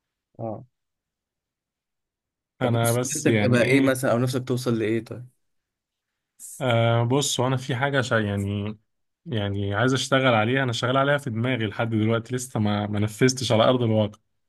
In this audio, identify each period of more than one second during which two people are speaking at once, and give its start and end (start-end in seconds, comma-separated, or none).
2.6-4.0